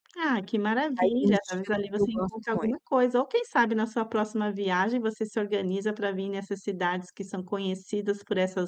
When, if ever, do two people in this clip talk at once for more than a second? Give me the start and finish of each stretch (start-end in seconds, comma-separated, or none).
1.0-2.8